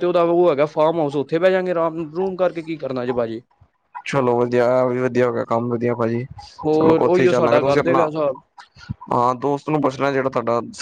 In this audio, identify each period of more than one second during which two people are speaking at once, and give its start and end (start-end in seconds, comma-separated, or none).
6.7-8.1